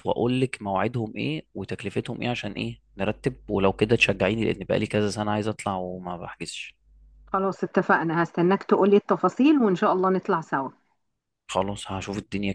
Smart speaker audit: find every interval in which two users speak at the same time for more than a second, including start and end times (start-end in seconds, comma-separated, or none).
none